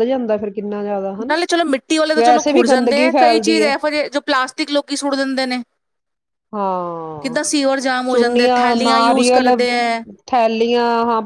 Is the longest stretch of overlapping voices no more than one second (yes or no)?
no